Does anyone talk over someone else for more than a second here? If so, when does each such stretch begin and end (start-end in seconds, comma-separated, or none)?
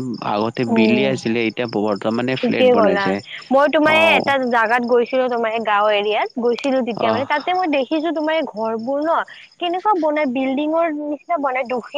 none